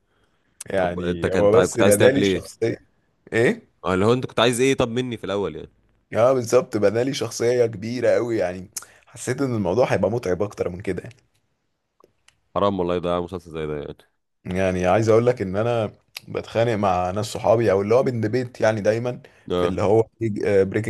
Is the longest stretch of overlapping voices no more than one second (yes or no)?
no